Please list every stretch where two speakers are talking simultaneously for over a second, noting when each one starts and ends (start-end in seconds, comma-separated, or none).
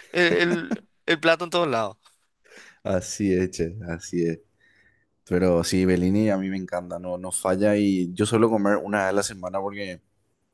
none